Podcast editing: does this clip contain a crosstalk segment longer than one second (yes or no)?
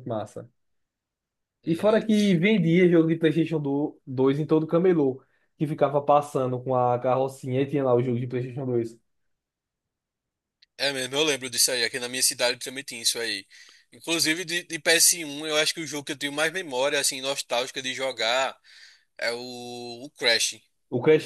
no